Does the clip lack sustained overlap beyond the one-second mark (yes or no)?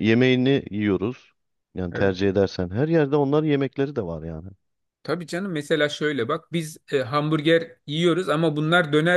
yes